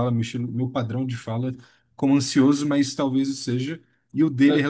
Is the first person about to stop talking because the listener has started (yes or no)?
no